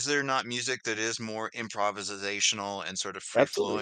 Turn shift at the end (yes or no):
no